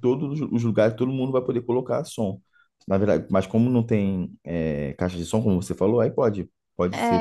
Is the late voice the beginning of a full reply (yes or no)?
yes